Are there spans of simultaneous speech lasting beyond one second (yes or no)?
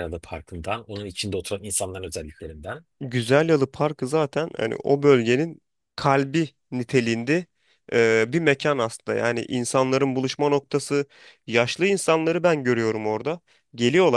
no